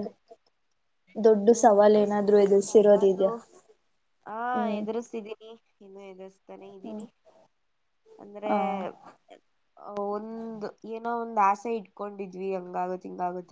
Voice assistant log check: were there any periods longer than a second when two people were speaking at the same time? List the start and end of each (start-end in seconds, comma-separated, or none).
1.6-3.3